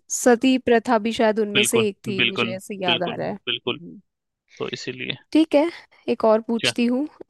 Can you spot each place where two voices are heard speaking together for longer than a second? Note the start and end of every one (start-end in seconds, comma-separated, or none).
1.5-3.8